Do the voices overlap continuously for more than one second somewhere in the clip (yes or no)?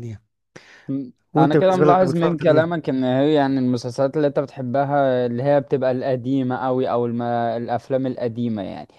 yes